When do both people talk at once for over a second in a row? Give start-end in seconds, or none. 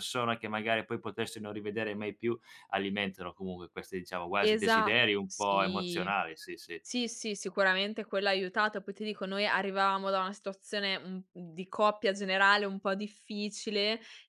4.4-6.1